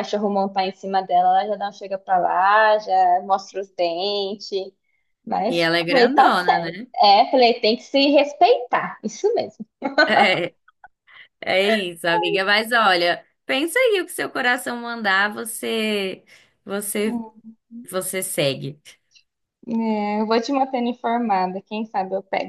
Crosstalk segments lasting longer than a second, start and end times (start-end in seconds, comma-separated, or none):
5.5-6.9